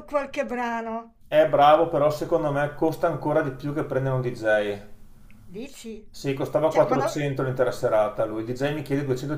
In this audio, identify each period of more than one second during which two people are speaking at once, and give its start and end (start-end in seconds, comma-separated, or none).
none